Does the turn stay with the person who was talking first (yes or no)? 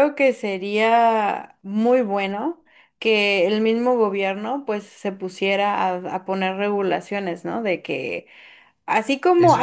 yes